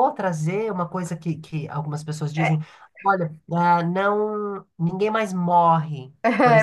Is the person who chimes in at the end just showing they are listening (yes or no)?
no